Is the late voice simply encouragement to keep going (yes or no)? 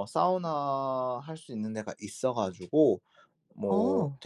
yes